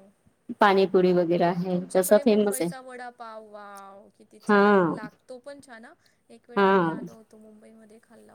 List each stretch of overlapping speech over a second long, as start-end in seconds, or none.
none